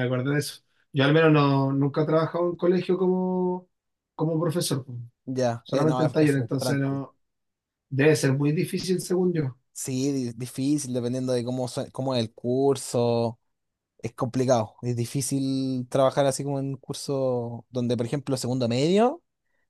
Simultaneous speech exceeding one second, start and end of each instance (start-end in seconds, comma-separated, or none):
5.6-7.0